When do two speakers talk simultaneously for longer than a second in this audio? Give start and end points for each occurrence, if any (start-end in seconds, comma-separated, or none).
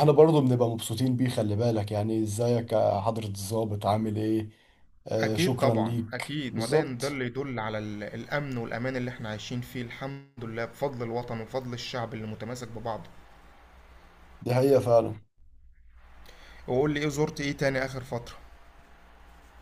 5.2-7.2